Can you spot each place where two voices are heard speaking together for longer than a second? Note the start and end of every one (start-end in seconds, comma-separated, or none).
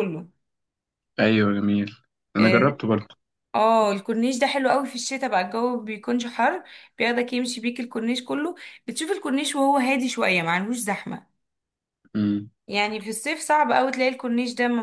none